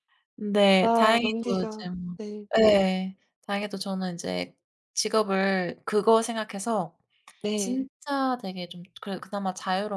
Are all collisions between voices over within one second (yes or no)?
no